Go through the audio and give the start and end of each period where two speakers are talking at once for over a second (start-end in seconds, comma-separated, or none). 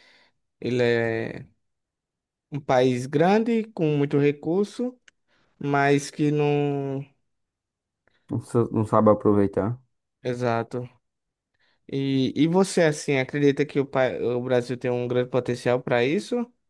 none